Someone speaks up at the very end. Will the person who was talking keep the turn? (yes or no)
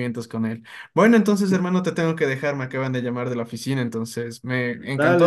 no